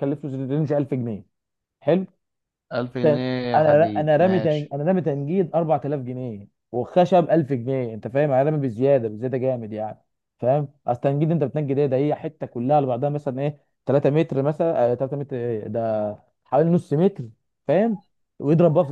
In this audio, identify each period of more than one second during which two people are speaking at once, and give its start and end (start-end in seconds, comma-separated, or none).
3.0-4.7